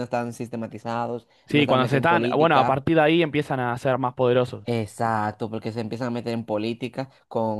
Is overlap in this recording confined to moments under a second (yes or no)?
no